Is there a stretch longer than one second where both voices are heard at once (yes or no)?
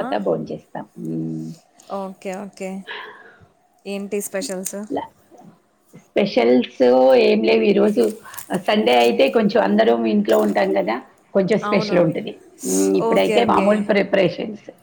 no